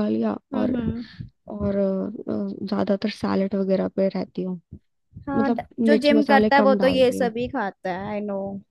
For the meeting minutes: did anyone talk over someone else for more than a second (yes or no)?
yes